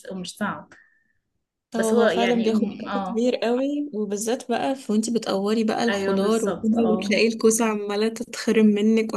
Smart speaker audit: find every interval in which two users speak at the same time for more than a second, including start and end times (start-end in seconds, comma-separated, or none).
1.7-3.3, 5.9-7.1